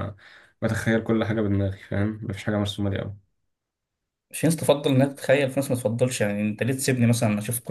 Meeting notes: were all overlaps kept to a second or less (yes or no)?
yes